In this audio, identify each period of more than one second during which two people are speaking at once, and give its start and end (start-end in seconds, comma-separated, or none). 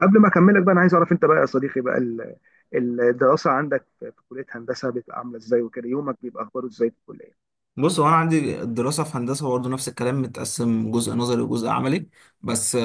none